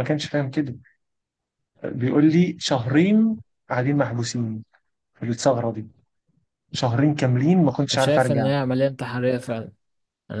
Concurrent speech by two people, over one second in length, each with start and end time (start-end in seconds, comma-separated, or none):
none